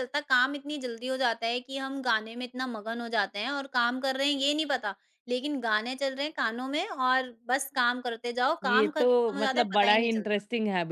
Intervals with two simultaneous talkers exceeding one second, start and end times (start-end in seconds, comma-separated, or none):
8.6-10.4